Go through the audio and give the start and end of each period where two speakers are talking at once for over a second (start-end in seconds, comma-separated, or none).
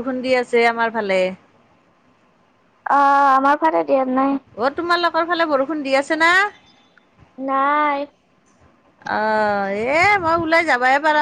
none